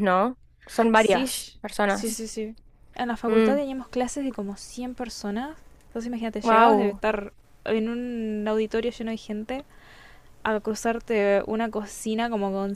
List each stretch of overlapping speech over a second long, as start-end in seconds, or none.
0.9-2.2